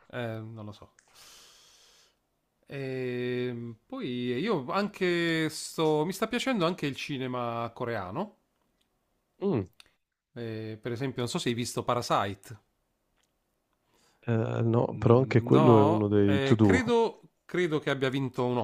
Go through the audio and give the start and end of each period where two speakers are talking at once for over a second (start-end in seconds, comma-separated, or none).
14.9-16.8